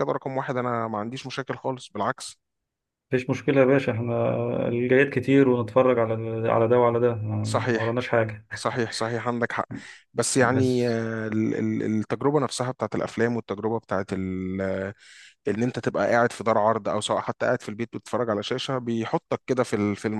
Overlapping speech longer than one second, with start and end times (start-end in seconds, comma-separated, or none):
none